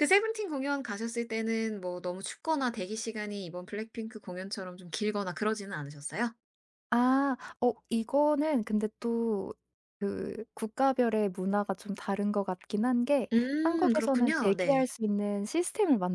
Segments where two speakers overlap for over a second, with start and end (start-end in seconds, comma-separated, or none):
13.3-14.9